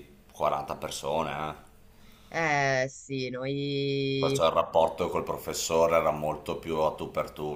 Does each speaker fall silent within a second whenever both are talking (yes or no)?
yes